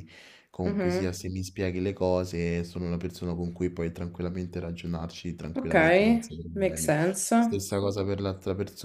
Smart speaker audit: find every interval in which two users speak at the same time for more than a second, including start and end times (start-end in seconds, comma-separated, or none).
none